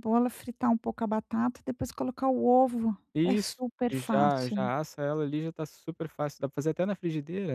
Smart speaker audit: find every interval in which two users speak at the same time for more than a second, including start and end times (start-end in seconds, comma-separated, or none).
3.1-4.6